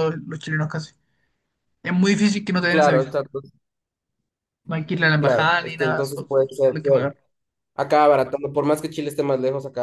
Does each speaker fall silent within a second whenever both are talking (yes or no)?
no